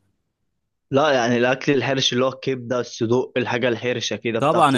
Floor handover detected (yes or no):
yes